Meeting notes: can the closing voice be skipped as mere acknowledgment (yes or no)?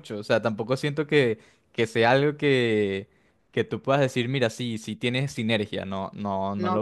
no